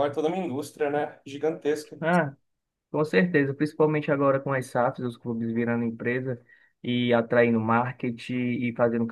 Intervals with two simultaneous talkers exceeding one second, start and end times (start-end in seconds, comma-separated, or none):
none